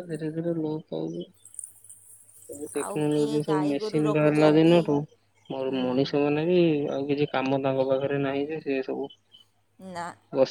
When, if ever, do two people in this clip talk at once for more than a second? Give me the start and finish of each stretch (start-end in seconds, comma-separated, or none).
2.8-4.8